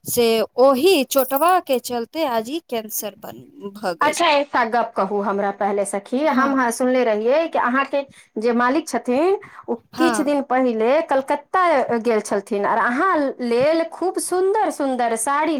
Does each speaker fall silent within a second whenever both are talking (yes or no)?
yes